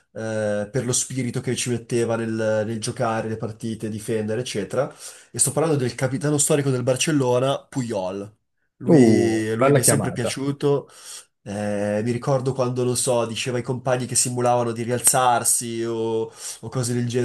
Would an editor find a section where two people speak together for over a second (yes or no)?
yes